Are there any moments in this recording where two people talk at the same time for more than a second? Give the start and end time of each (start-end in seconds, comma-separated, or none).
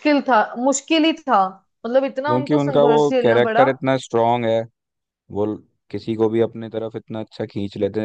2.3-3.7